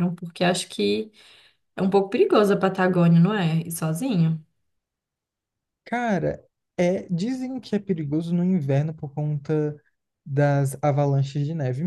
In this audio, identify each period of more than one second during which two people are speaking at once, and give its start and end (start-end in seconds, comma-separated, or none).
none